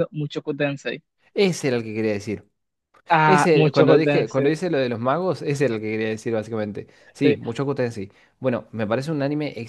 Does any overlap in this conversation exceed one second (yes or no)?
yes